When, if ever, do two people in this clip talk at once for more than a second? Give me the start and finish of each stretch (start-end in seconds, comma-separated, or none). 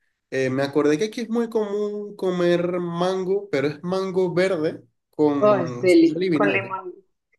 5.4-6.7